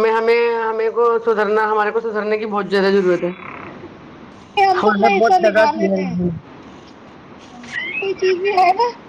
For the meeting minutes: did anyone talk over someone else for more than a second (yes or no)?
yes